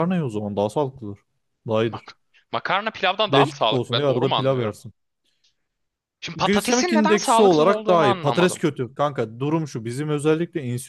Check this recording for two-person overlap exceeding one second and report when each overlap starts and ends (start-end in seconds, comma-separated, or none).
3.3-4.7, 6.4-8.6